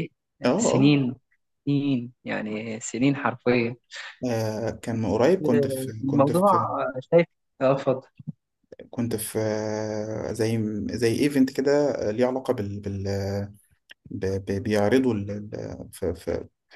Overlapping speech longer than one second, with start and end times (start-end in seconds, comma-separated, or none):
none